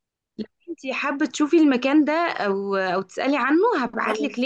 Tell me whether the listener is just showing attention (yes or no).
yes